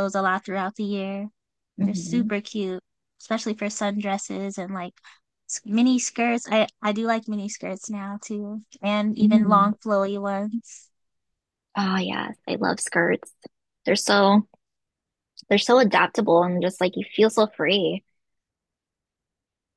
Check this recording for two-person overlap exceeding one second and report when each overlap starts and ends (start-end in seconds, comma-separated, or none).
none